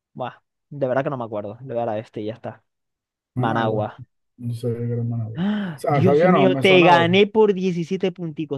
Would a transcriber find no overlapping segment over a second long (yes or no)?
no